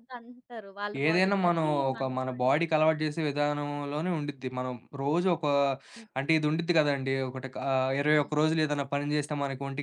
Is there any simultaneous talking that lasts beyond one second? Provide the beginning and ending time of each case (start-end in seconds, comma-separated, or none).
1.1-3.0